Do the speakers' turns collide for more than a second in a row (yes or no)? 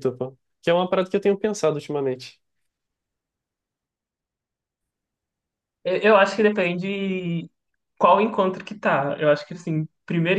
no